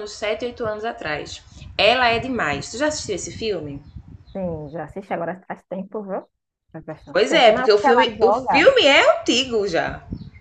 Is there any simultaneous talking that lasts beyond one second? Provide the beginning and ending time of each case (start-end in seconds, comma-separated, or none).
7.1-8.7